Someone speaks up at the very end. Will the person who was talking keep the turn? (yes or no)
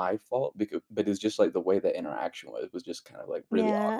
no